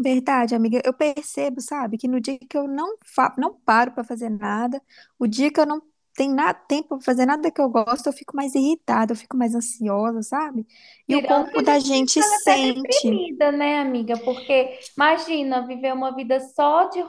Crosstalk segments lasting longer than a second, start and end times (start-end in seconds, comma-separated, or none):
11.1-13.2